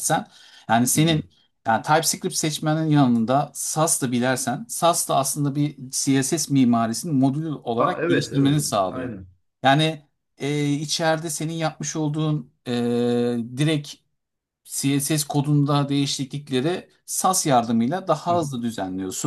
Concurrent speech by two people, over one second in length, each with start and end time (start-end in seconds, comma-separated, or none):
7.8-9.1